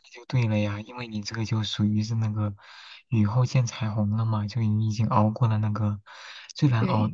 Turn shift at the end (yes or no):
no